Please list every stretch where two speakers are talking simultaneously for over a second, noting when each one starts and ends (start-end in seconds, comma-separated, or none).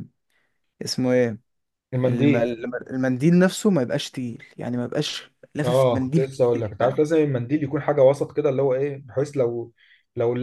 5.6-7.0